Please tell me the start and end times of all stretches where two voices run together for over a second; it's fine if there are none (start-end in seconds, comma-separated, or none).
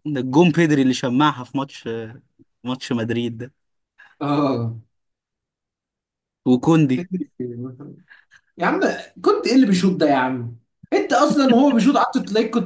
none